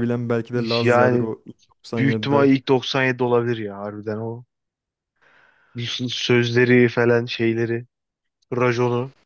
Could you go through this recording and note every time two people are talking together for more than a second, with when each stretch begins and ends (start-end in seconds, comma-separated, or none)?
none